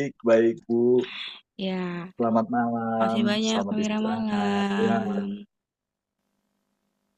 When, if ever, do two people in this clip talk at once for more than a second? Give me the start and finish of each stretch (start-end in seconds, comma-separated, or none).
3.0-5.2